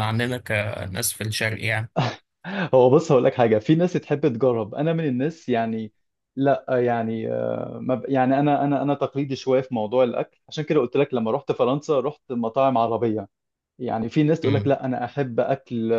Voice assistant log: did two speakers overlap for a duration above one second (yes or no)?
no